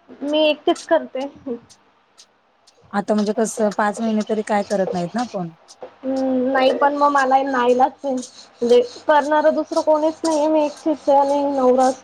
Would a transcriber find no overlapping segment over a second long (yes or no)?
yes